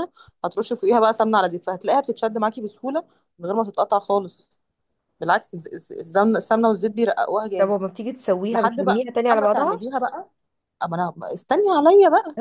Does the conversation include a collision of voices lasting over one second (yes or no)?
yes